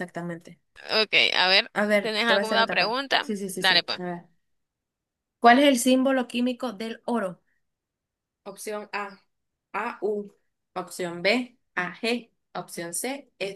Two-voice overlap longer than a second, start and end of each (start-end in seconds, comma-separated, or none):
1.7-4.0